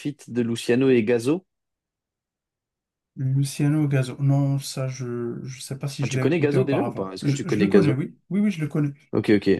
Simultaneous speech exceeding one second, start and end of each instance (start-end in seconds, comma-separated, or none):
6.0-8.0